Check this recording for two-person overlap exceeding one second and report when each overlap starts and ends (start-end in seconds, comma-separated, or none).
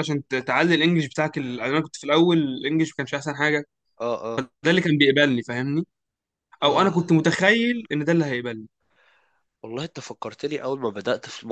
none